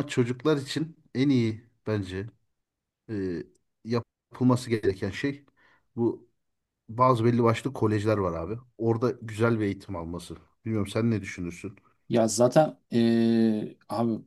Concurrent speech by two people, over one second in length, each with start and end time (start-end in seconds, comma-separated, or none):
none